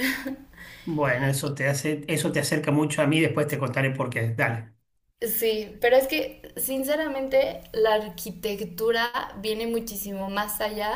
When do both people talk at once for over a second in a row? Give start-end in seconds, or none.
none